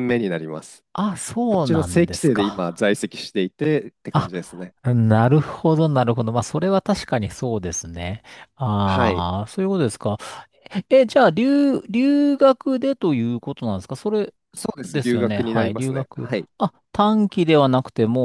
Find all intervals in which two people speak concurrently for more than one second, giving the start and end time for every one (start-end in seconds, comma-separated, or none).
1.5-2.9, 14.8-16.5